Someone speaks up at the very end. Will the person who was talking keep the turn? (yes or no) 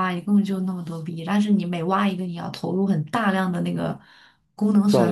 yes